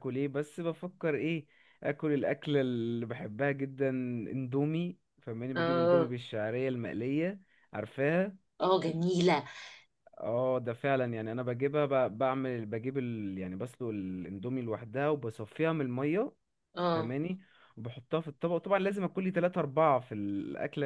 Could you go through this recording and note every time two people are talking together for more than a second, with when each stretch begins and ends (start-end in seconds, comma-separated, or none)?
none